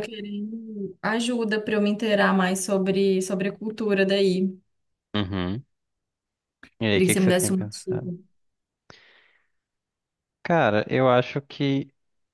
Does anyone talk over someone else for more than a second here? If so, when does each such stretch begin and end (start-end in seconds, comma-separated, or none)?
6.9-8.1